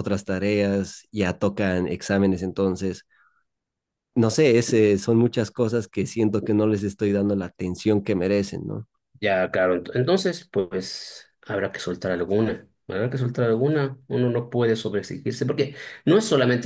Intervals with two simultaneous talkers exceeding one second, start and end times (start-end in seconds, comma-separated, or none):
none